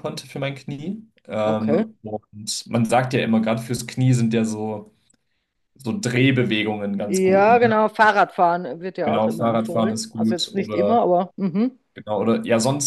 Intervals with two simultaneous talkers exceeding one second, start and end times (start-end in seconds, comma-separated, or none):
9.0-11.0